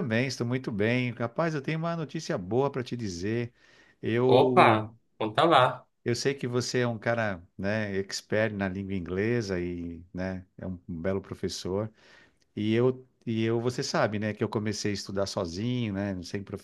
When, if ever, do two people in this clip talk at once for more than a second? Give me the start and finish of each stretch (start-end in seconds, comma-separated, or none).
none